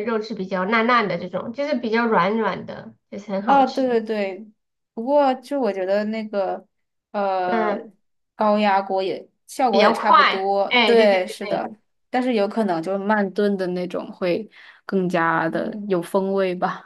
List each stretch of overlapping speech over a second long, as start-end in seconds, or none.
9.7-11.7